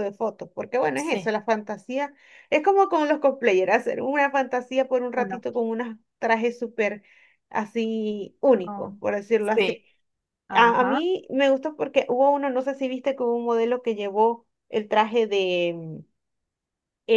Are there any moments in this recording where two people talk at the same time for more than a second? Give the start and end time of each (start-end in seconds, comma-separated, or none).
none